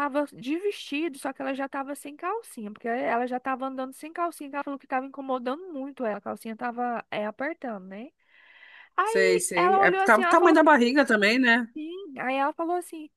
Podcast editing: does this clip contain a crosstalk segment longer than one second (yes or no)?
yes